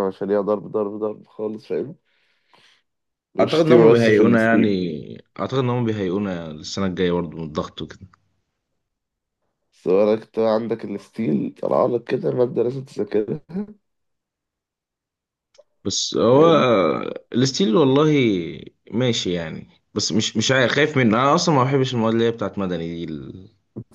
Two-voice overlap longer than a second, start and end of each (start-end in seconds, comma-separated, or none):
3.4-4.7